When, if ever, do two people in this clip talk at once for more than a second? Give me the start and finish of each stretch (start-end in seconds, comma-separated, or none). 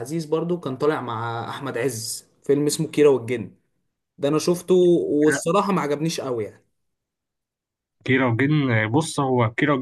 none